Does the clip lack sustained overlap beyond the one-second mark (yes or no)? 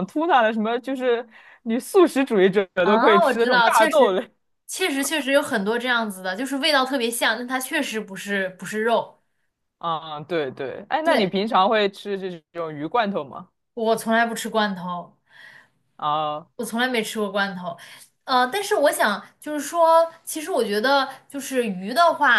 no